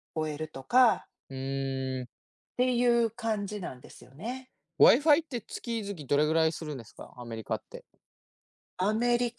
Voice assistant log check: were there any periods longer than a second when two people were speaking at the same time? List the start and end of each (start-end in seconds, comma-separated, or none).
none